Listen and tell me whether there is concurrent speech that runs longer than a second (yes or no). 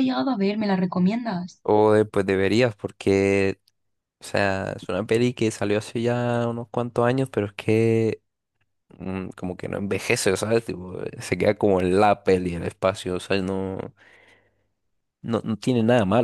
no